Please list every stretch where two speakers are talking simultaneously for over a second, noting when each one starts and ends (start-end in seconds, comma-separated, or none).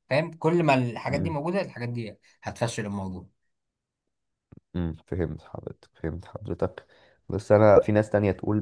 none